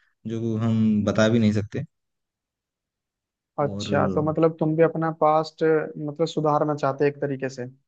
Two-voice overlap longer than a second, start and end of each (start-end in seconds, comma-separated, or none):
none